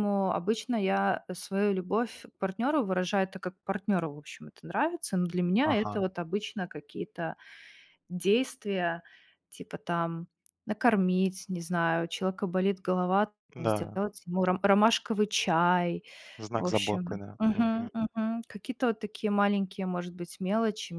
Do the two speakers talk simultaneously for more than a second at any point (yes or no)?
yes